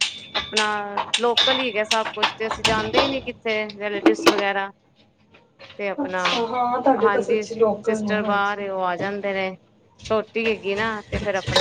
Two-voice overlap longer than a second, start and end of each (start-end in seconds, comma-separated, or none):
7.0-8.7